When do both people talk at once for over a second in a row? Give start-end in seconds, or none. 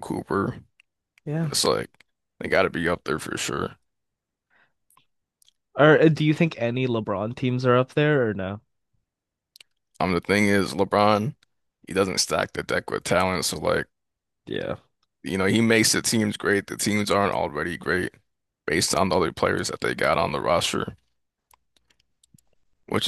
none